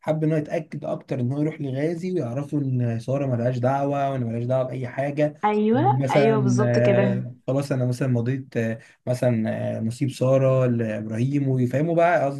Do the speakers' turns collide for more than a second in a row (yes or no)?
yes